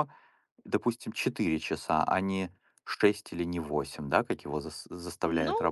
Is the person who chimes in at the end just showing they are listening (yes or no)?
no